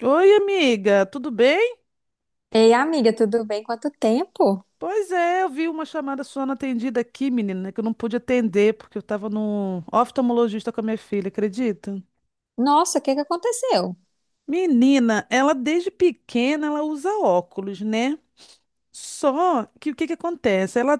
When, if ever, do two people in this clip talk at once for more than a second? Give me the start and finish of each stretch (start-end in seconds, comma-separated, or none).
none